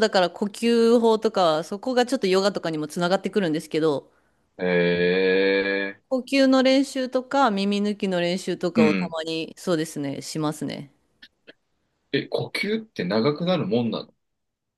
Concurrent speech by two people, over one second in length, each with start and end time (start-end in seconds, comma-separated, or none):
none